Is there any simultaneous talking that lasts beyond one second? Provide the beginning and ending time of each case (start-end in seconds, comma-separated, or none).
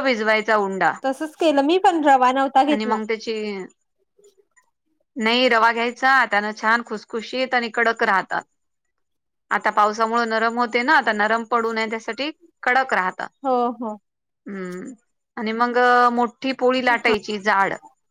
none